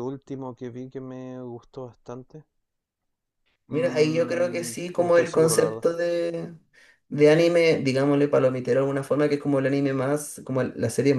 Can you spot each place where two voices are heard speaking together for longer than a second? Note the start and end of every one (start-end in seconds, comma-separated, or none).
3.7-5.8